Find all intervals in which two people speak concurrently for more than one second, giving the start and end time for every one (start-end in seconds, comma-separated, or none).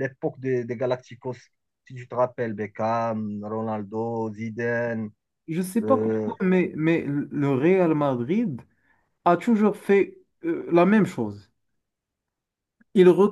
none